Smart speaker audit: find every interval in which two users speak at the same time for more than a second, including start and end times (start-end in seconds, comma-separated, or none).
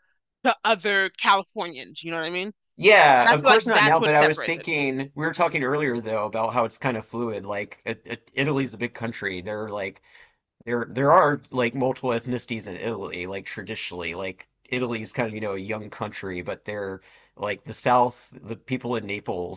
3.2-4.7